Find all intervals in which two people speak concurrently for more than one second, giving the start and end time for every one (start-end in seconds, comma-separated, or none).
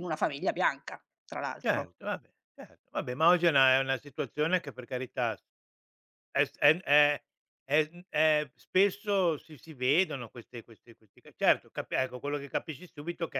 none